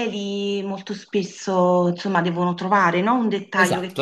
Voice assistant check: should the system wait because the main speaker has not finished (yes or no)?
no